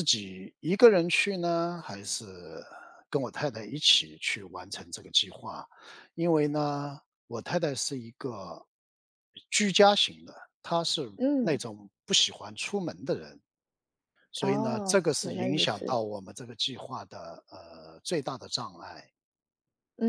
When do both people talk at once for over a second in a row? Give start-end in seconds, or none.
14.4-16.0